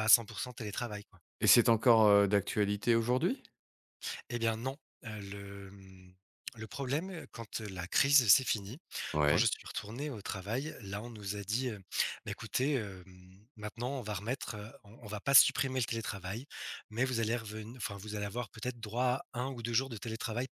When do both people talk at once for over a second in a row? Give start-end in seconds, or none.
none